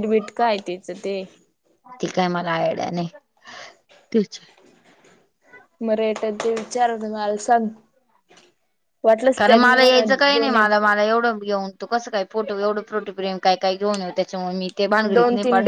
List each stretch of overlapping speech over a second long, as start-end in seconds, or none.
9.4-10.8